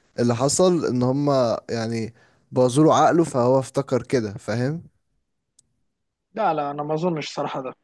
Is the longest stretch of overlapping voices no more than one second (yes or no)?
yes